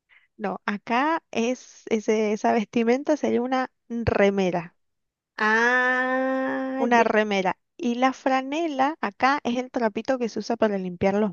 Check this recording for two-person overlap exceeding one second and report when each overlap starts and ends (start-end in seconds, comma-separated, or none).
none